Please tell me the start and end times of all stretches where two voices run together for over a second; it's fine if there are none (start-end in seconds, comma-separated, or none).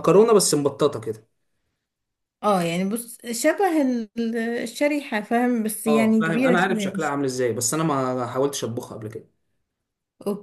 5.9-7.1